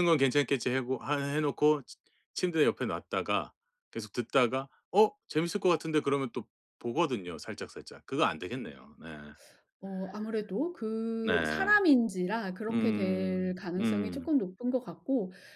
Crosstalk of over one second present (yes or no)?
yes